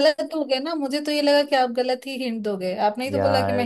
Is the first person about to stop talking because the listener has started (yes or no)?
yes